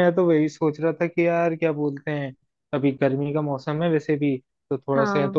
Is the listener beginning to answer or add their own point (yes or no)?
no